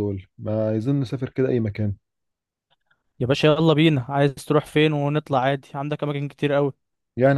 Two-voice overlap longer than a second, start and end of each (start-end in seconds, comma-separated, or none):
none